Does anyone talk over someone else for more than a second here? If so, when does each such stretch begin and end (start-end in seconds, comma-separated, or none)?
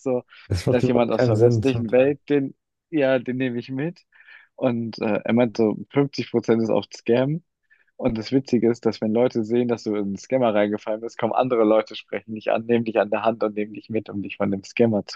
0.7-2.2